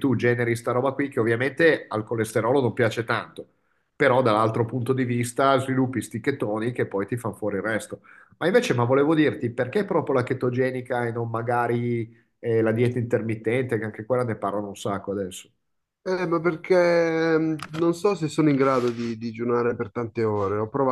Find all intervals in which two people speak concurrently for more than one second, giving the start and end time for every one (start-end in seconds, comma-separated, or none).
none